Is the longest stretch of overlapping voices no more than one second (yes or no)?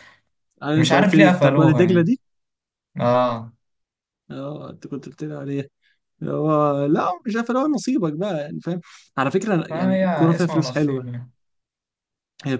no